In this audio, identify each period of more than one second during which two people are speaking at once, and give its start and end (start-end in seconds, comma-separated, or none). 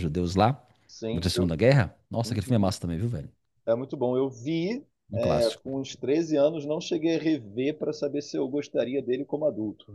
none